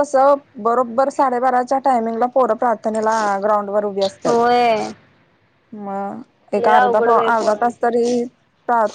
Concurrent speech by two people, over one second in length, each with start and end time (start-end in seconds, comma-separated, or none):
6.6-7.9